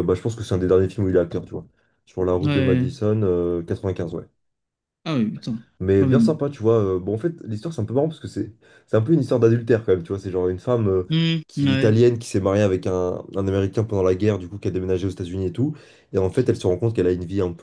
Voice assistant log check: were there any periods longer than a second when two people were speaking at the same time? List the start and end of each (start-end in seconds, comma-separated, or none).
none